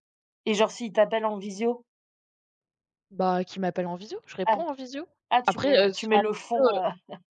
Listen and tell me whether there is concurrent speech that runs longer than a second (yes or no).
yes